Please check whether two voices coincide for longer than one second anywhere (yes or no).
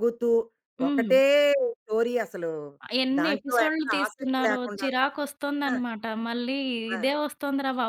yes